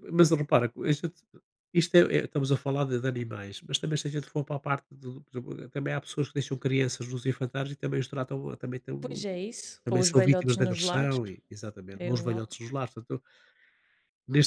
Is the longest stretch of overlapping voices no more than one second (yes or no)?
no